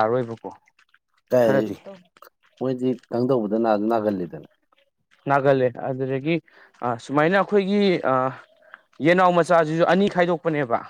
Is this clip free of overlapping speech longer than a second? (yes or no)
yes